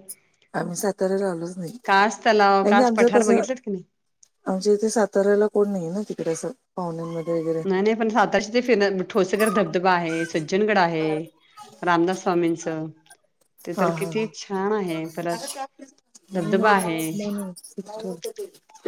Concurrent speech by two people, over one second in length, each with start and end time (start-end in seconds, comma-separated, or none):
1.8-3.4